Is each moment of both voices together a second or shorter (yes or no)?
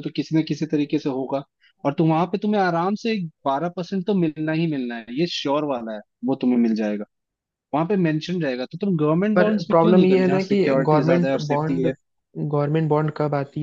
no